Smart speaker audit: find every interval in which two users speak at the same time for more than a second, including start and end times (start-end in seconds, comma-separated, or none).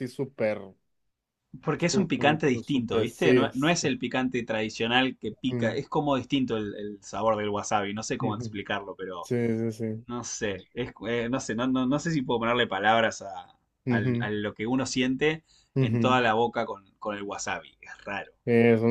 1.9-3.5